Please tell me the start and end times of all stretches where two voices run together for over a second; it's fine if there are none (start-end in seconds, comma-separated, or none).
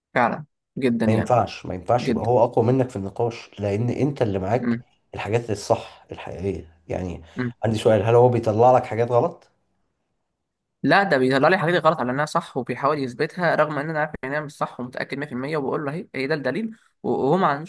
none